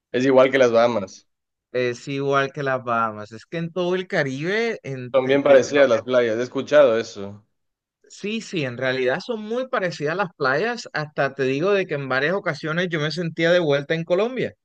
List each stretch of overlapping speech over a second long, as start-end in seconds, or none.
none